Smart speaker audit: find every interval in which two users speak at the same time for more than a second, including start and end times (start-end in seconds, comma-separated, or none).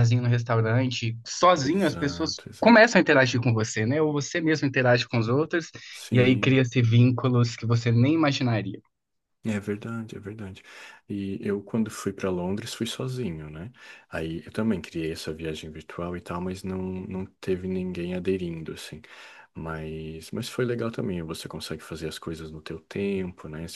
1.6-2.9